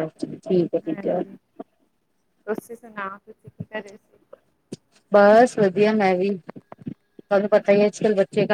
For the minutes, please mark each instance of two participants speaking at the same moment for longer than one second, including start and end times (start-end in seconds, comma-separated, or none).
none